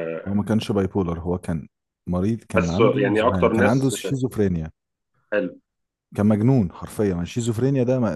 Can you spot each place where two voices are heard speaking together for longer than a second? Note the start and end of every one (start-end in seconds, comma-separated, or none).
2.5-4.2